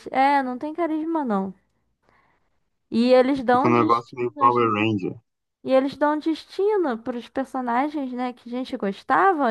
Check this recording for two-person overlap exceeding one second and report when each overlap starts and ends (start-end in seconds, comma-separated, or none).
3.5-4.7